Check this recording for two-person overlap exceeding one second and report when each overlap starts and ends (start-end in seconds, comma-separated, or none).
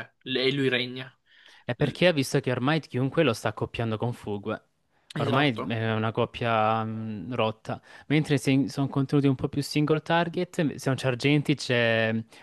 none